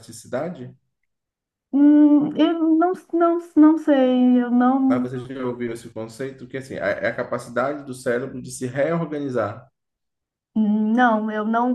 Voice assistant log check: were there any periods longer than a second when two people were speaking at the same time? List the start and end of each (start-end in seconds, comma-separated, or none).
none